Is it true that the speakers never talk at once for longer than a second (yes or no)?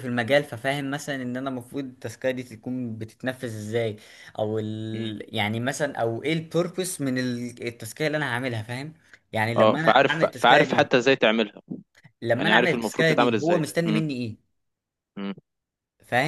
no